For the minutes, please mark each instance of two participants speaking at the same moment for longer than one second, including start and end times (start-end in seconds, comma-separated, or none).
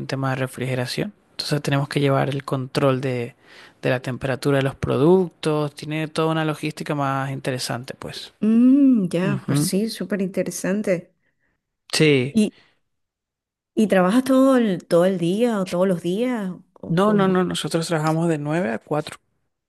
none